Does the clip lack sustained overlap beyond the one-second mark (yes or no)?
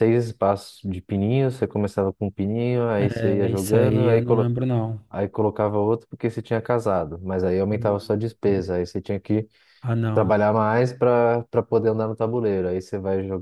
no